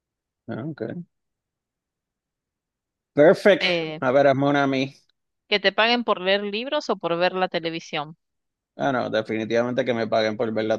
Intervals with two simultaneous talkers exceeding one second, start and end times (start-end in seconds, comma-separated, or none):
none